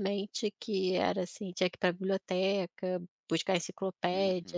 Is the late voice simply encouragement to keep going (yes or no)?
yes